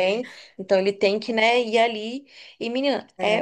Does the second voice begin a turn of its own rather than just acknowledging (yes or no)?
no